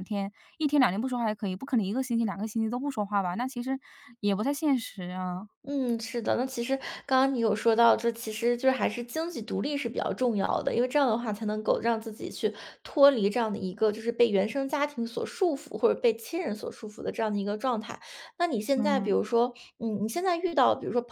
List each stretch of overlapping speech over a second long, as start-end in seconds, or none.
none